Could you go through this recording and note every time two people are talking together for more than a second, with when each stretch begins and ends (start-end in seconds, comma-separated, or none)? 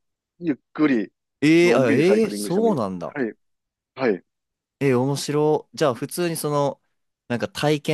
1.6-3.1